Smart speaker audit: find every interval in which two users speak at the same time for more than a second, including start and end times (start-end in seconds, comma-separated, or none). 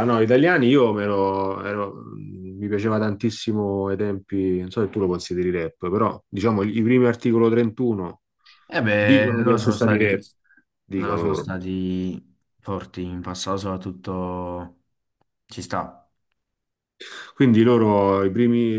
9.0-10.2